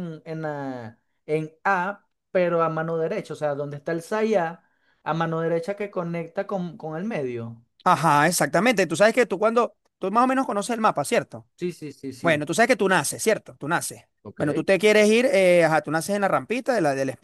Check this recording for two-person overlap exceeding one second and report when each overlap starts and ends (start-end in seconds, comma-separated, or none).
none